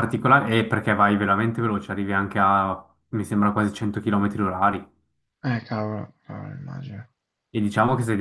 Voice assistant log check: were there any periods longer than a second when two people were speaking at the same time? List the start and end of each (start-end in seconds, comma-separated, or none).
none